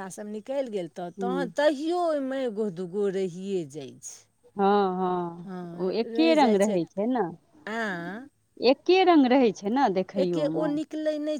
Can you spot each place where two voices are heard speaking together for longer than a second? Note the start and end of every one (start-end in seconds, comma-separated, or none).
none